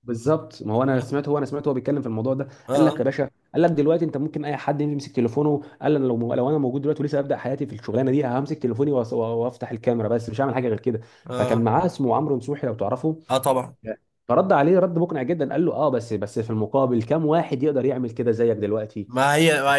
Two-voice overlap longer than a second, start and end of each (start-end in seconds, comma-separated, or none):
none